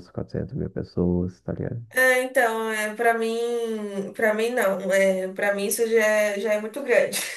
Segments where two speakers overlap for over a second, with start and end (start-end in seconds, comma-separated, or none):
none